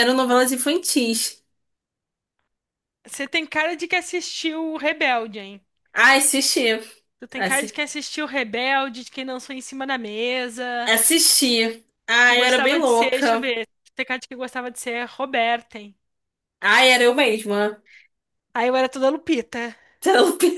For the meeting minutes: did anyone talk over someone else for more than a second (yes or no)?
yes